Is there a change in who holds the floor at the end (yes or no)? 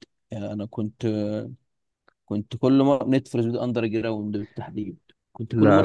no